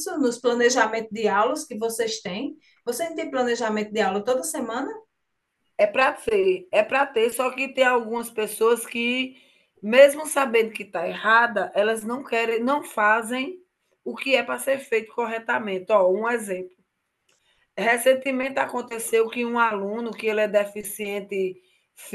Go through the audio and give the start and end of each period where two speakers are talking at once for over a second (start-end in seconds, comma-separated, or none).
none